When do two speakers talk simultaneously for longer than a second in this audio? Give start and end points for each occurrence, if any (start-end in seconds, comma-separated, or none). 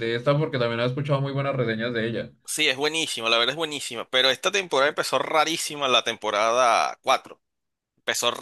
none